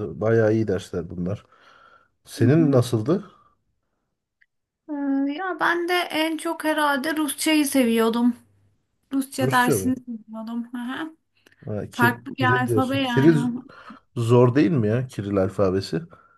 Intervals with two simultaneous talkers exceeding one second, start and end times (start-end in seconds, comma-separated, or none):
11.9-13.3